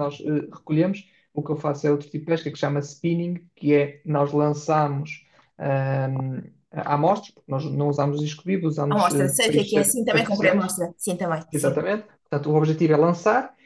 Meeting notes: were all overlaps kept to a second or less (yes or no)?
no